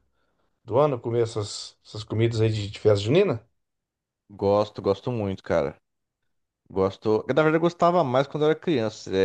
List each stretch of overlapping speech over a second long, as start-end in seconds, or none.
none